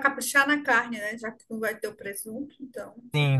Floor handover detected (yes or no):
yes